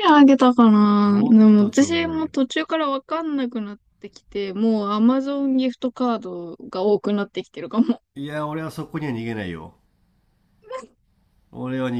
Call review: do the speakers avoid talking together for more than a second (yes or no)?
no